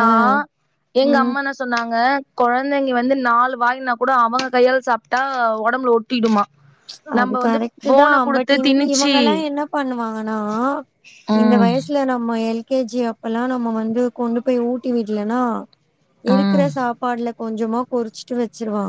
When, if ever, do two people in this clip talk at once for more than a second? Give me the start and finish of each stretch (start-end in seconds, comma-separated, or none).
none